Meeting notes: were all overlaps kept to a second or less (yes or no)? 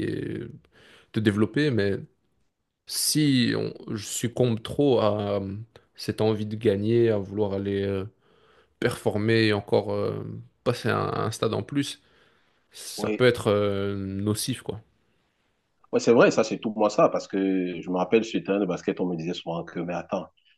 yes